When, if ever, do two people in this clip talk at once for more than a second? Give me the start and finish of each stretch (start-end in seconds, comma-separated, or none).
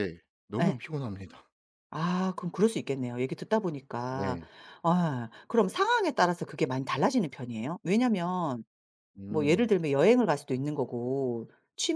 none